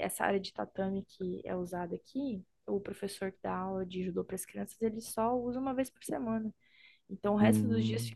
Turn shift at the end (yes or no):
no